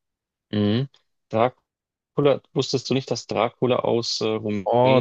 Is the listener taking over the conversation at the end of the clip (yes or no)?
yes